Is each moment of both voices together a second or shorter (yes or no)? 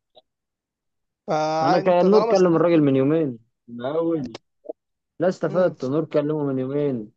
no